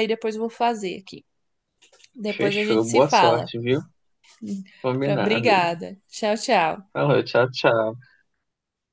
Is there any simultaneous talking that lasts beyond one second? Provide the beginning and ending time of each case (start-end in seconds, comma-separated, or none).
2.3-3.5